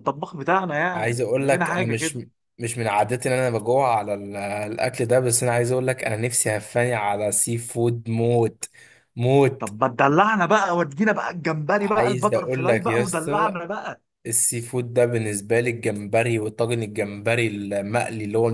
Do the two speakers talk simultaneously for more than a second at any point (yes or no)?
yes